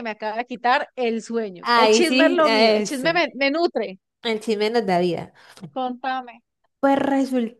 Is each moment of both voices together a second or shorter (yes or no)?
no